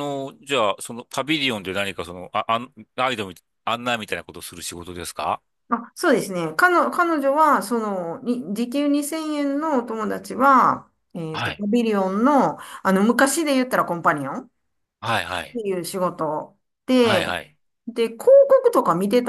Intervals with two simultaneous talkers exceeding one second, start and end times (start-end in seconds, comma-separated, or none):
none